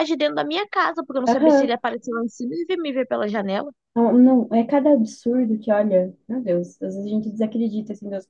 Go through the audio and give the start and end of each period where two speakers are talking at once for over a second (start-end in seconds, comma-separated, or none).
none